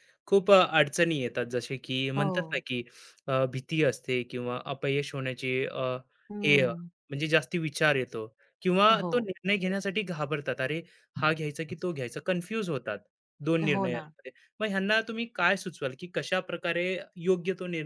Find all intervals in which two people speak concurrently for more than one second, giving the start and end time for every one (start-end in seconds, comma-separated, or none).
none